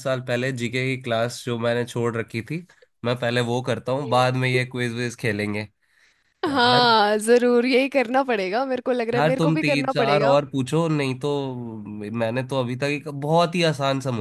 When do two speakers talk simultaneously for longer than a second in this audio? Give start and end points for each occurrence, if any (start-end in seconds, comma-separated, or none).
9.1-10.3